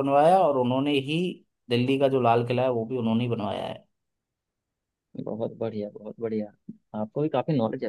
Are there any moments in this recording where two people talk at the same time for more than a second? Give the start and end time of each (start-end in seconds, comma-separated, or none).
none